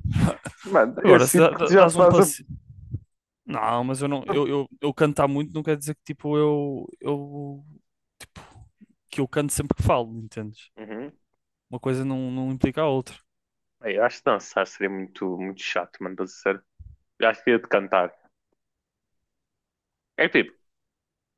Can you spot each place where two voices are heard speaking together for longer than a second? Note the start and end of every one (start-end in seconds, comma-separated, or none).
1.0-2.3